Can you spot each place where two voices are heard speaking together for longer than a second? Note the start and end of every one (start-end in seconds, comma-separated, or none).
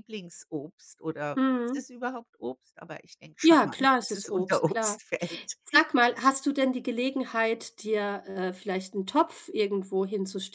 3.4-5.0